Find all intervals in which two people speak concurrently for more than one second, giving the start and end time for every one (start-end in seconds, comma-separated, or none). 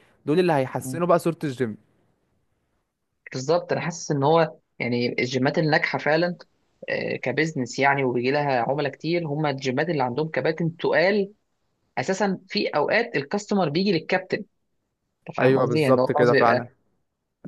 15.4-16.7